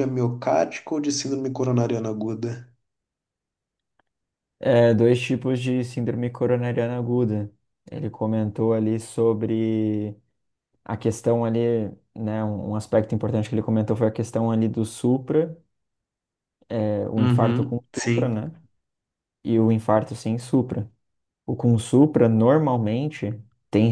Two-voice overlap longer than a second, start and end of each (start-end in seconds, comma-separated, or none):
17.2-18.4